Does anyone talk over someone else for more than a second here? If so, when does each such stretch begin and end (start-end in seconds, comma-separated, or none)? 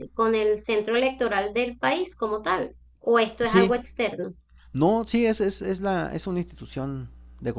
none